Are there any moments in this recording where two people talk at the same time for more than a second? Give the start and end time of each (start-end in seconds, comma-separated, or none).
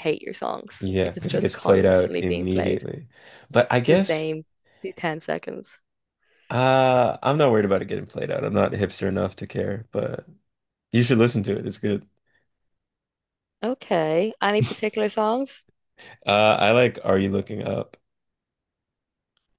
0.8-2.8